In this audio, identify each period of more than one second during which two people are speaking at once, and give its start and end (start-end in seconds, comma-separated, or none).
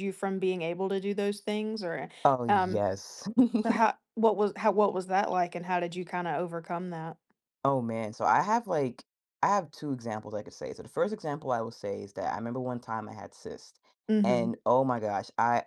none